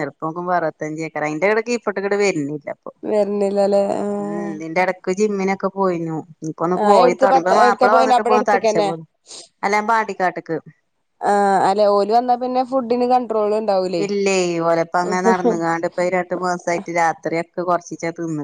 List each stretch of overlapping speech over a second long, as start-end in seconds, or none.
6.8-8.9